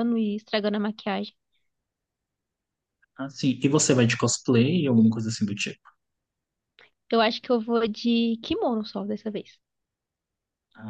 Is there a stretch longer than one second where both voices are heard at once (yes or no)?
no